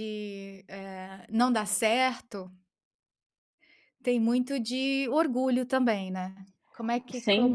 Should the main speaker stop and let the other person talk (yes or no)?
yes